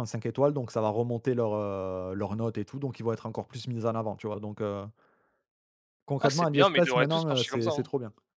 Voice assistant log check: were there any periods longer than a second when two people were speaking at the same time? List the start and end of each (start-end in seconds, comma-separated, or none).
6.2-7.9